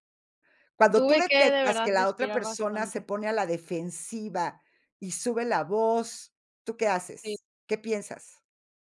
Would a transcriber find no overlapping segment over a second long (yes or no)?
no